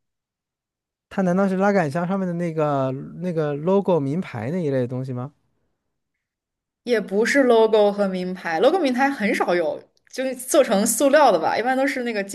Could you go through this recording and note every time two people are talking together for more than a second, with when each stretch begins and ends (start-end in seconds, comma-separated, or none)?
none